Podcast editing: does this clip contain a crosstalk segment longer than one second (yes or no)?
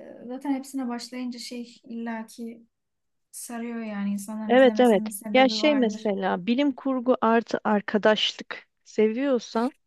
yes